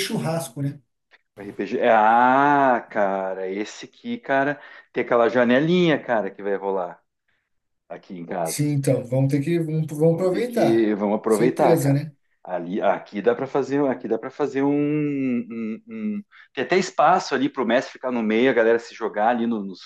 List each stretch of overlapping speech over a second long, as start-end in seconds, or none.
10.1-12.1